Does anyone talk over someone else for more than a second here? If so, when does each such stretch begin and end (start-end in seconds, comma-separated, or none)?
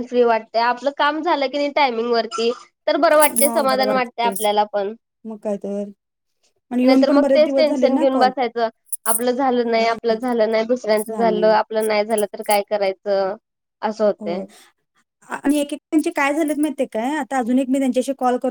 6.8-8.3